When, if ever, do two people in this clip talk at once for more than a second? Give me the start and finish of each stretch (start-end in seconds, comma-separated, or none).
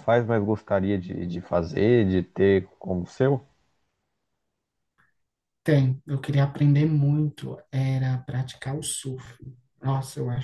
none